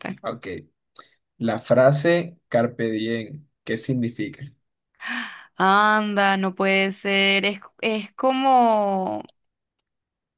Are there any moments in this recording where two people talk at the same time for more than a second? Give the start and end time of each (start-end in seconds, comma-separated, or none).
none